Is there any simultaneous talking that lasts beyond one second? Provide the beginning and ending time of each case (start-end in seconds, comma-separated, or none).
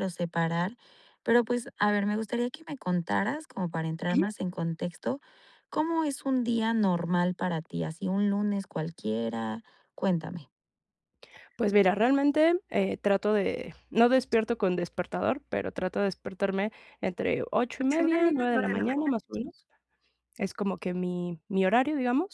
17.7-19.2